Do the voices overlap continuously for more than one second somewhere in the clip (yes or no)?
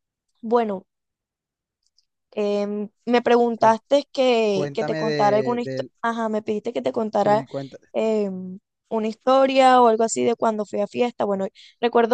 yes